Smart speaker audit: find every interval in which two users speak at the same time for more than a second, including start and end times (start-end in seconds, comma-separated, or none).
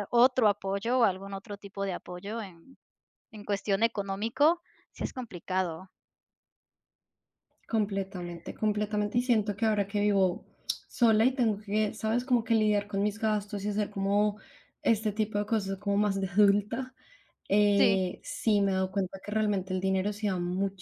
none